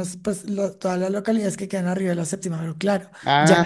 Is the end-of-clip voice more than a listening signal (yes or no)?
no